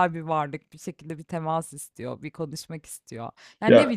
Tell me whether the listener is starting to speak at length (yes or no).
no